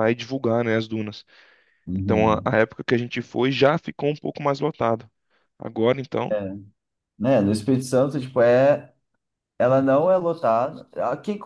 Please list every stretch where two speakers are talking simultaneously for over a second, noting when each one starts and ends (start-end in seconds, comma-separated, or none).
none